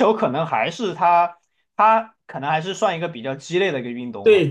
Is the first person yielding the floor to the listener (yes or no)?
yes